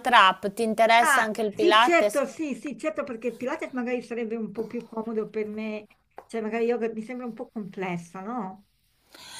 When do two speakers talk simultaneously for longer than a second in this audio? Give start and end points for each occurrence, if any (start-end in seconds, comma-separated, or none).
1.0-2.2